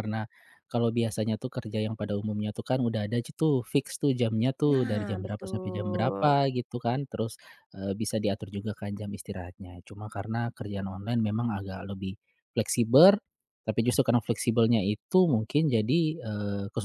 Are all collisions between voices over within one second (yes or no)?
no